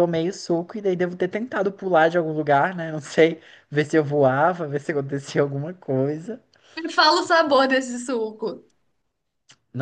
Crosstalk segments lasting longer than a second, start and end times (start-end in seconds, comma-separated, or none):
none